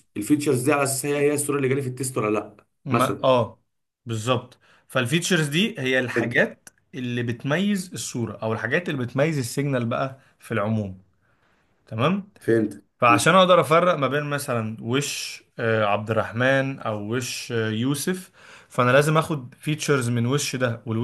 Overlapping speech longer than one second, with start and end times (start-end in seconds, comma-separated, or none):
none